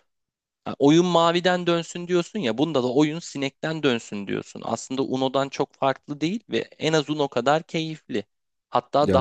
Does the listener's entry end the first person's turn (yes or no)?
no